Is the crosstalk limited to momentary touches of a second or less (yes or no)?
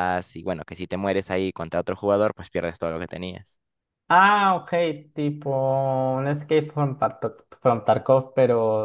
yes